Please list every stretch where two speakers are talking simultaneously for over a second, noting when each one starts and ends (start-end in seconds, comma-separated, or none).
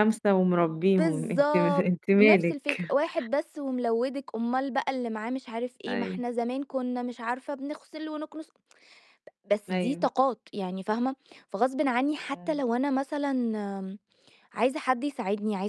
1.0-2.9